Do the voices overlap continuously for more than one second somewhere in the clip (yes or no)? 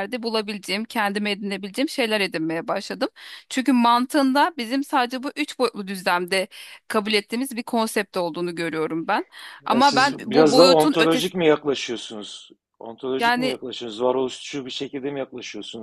yes